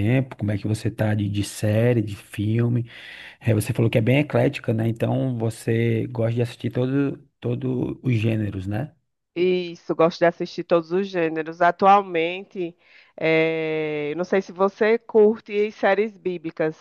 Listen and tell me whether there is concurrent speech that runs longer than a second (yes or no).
no